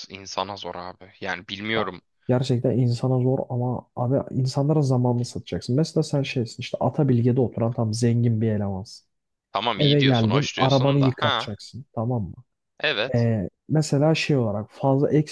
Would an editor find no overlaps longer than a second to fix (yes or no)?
no